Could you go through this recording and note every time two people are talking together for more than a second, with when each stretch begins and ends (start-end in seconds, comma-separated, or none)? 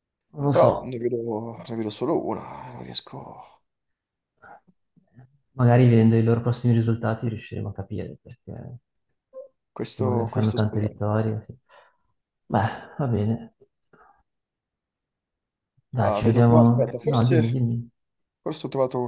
9.9-11.1, 16.0-17.6